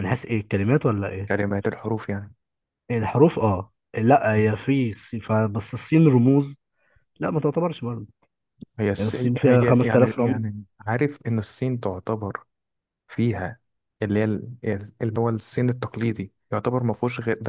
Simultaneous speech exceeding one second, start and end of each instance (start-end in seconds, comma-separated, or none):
9.0-10.5